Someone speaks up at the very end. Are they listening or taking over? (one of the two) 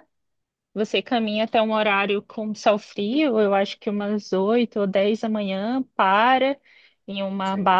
listening